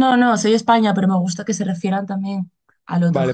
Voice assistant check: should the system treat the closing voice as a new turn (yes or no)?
yes